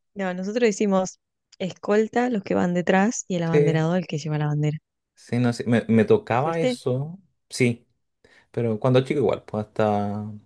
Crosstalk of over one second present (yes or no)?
no